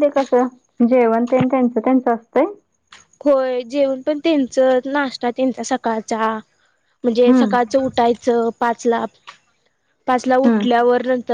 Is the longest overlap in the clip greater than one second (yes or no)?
no